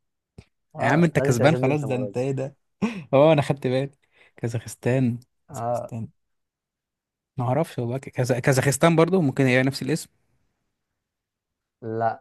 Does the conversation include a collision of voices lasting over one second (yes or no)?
yes